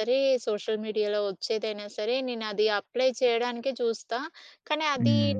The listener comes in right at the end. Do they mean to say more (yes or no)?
no